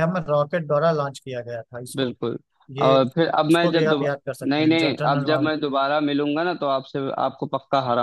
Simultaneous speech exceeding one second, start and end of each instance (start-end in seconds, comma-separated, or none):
2.8-5.5